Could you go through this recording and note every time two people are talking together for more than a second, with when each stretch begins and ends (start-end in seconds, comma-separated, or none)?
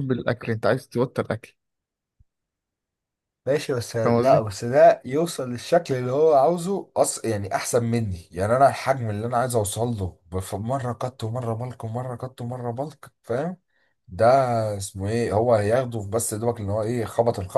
none